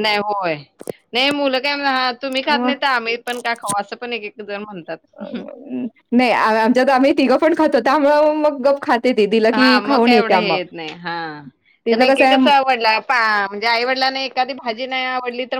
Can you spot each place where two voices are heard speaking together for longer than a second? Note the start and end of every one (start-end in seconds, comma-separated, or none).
none